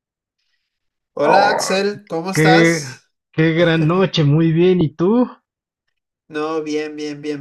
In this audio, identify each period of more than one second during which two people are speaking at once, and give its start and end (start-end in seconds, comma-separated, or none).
1.2-2.8